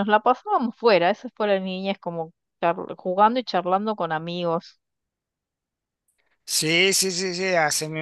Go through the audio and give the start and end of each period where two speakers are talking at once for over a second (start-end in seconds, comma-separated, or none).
none